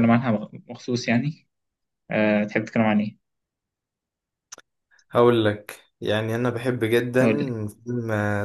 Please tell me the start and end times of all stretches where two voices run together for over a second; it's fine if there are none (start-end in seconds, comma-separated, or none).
none